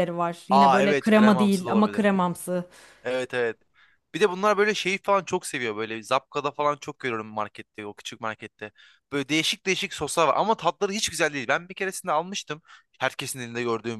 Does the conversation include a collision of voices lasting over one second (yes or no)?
yes